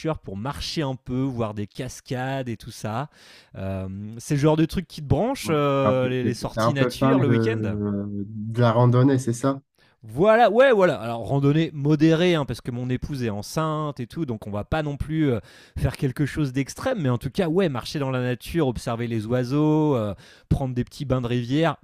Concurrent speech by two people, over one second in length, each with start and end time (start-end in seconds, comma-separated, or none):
5.4-7.8